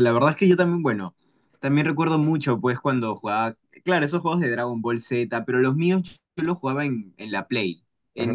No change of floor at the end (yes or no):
yes